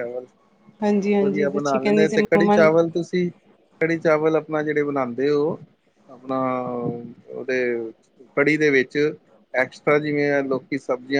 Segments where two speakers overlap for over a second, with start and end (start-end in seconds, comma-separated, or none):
0.9-2.6